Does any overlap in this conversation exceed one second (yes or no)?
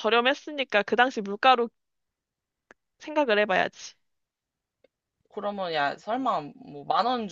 no